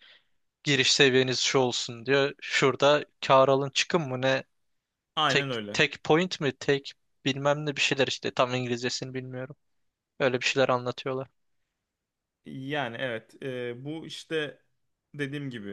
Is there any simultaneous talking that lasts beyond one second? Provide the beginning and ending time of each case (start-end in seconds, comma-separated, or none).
none